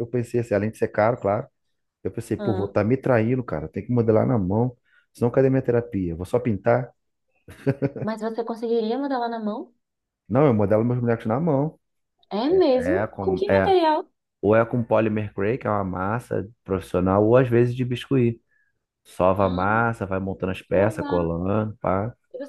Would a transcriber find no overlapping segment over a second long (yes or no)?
no